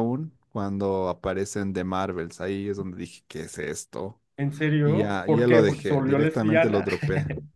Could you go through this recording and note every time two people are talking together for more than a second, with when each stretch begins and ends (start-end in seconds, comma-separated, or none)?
4.8-6.9